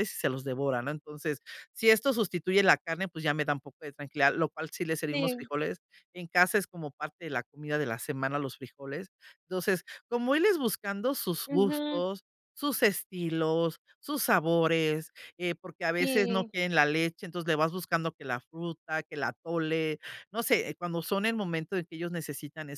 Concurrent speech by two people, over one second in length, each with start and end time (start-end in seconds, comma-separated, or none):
none